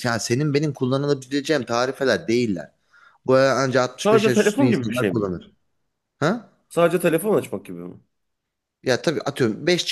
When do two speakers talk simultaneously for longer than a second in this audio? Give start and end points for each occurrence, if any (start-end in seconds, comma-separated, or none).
4.1-5.3